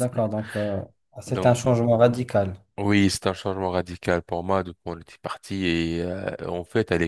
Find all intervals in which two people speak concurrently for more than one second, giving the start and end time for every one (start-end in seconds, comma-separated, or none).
none